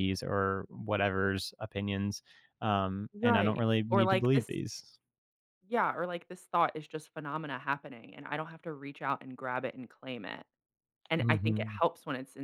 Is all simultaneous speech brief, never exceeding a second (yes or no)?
no